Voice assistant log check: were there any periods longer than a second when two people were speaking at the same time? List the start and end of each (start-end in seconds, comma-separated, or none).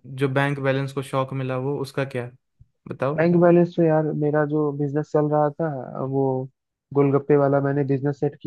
none